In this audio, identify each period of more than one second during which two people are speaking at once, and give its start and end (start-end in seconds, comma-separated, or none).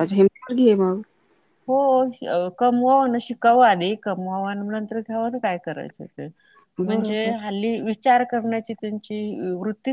none